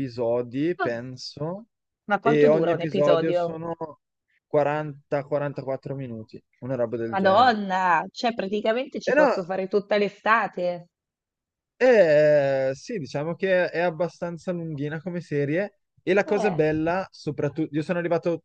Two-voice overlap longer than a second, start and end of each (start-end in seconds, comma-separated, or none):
2.2-3.5